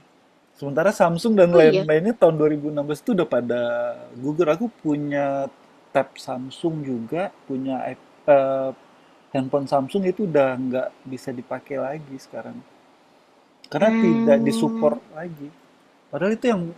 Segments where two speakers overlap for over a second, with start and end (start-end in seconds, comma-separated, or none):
13.8-15.0